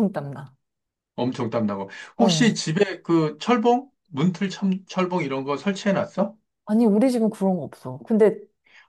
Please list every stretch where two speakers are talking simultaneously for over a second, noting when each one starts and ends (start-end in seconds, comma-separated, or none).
none